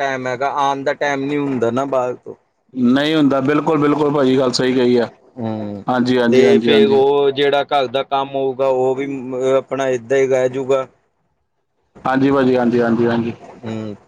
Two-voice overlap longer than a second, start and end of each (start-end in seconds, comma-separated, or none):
none